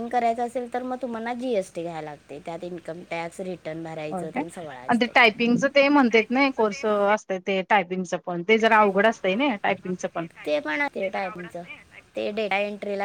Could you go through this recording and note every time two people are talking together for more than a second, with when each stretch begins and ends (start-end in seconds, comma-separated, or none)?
none